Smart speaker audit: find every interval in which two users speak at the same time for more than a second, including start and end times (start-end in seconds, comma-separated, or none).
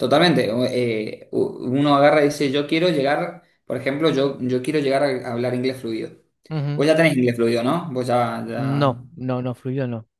none